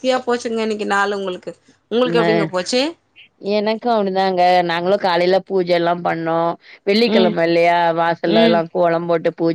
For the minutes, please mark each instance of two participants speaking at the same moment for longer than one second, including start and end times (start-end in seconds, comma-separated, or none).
none